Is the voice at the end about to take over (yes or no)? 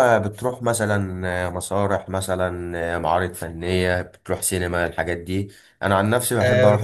no